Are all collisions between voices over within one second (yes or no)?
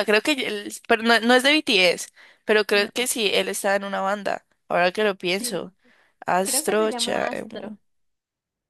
no